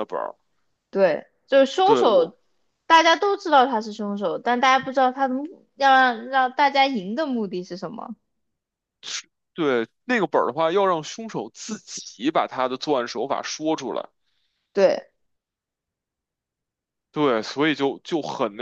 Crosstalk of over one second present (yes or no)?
no